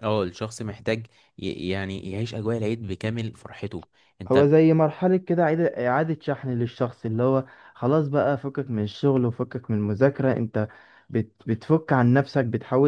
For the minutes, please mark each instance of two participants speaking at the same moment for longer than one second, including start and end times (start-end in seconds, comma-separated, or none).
none